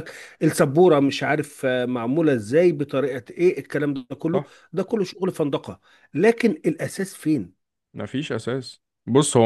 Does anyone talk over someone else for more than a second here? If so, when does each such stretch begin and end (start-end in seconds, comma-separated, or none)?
none